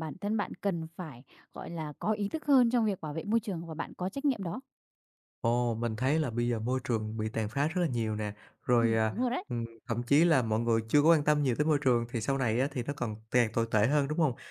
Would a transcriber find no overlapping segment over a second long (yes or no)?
yes